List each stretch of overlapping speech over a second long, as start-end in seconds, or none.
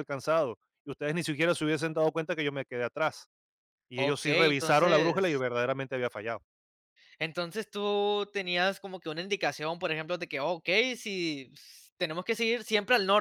4.0-5.5